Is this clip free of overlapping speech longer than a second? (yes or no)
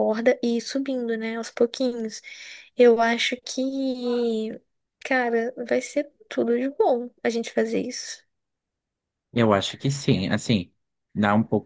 yes